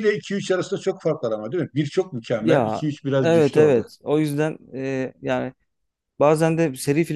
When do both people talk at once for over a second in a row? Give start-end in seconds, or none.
2.4-3.8